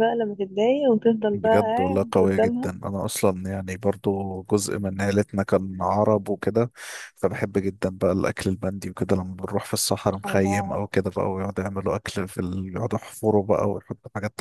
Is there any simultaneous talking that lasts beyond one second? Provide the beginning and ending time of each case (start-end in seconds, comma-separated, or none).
1.3-2.7